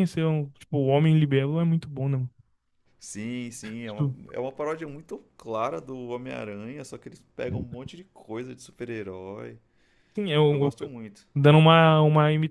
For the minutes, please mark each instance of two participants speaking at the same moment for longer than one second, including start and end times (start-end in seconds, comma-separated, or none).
none